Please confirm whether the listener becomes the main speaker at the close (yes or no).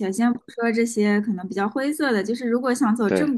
no